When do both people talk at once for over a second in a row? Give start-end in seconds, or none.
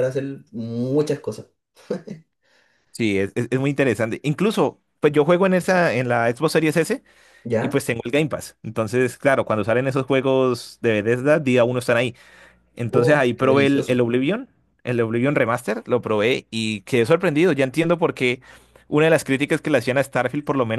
12.9-14.1